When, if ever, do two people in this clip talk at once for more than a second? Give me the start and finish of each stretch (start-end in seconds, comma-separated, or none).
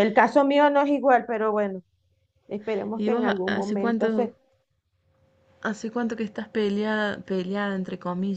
3.0-4.3